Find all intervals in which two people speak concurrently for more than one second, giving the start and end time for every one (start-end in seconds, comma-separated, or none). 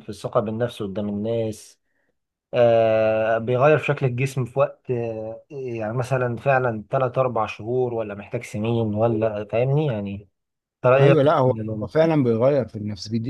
none